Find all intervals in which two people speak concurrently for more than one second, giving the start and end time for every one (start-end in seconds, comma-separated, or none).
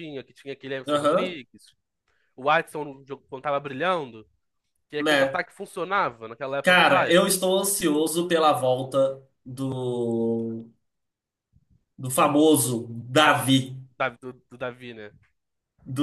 6.6-8.0